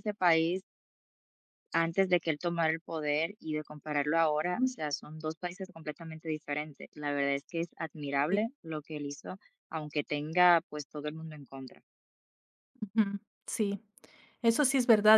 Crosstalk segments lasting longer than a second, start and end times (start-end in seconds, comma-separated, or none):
none